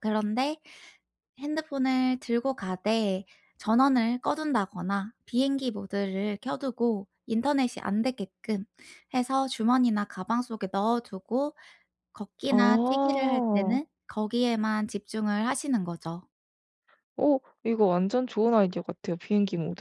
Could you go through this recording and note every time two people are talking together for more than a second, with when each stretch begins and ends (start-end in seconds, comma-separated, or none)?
12.5-13.8